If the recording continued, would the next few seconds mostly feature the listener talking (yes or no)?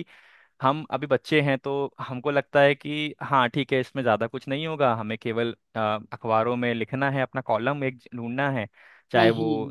no